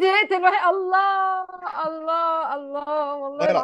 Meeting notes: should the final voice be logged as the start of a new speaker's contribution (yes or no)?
no